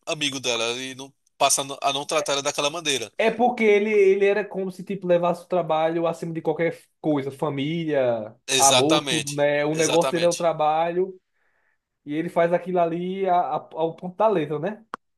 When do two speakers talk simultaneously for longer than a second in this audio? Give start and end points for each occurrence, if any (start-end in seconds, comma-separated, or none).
8.5-10.5